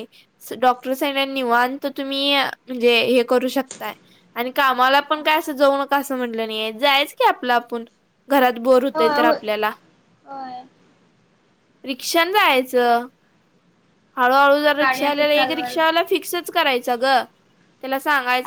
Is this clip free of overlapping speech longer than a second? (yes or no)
no